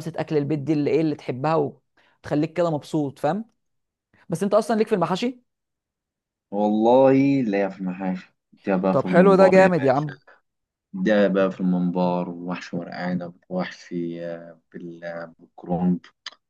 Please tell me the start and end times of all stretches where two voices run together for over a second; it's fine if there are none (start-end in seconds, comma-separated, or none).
8.9-10.2